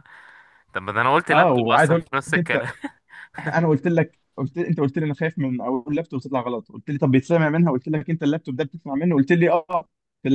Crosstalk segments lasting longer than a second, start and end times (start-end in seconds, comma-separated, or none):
1.3-2.6